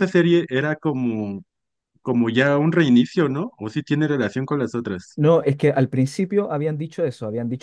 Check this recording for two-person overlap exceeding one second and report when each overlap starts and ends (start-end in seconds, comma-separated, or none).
none